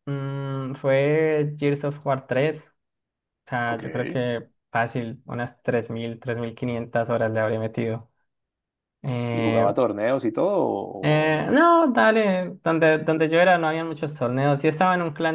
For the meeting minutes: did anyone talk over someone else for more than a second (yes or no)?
no